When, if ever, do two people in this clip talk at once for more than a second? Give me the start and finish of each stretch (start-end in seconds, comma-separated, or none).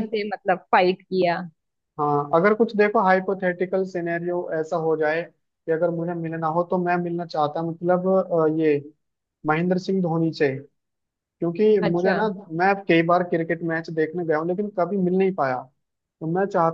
none